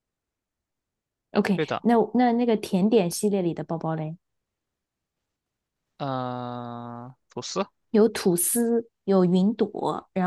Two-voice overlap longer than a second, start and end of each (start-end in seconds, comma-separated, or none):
none